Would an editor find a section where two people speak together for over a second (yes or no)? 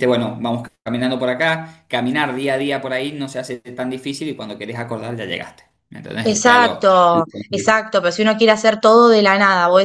yes